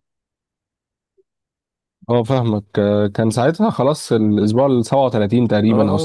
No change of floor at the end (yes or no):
no